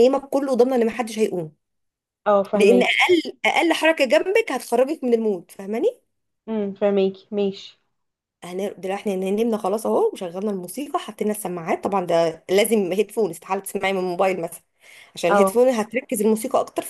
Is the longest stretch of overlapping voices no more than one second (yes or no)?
yes